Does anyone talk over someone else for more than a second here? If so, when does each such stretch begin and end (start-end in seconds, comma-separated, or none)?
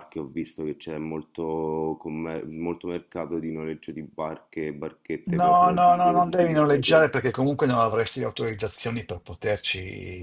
5.4-7.2